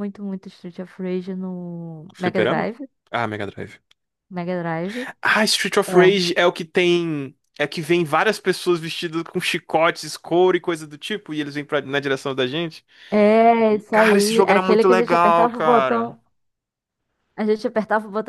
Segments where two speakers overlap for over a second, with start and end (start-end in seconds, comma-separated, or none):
13.4-16.2